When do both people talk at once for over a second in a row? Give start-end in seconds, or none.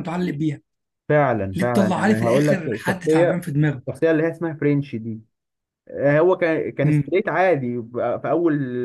1.5-3.4